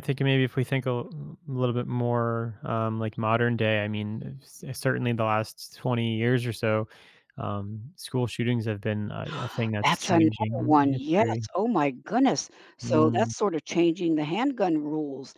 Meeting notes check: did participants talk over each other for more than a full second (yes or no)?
yes